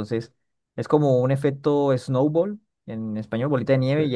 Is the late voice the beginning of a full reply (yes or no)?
no